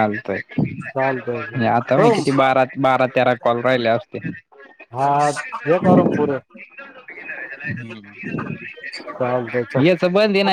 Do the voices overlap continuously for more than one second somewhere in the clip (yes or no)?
yes